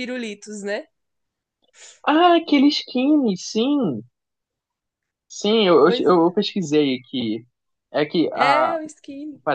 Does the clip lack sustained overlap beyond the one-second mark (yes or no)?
yes